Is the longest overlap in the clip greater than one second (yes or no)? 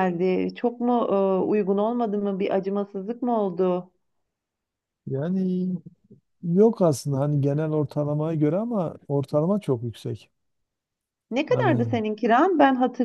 no